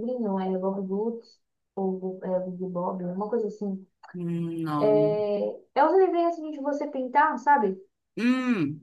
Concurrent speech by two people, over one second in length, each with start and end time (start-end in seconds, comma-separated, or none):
none